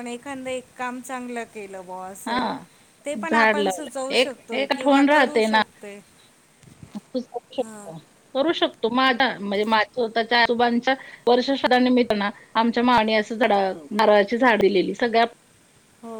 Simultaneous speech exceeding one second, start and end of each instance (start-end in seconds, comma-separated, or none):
3.0-5.6